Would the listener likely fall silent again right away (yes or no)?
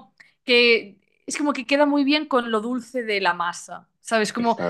yes